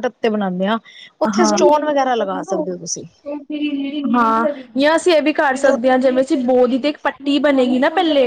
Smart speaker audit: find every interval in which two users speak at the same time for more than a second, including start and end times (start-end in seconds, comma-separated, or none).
none